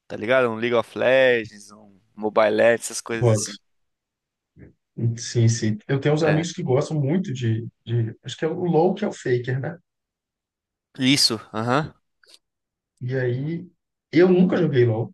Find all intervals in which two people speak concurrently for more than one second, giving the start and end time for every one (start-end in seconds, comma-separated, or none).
none